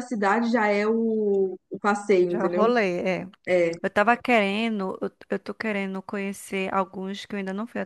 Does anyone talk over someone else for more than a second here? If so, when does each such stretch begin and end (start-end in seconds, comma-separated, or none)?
none